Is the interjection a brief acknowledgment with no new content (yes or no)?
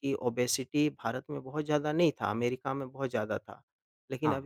yes